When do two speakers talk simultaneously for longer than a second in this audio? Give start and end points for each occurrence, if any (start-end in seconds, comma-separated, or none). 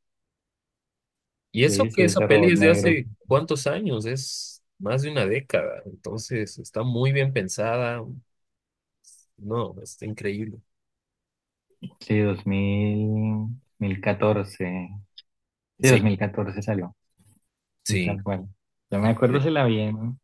1.6-3.0